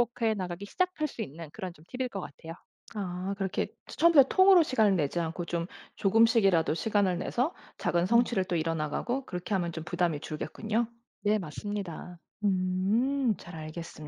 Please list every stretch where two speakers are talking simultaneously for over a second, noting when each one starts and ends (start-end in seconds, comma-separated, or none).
none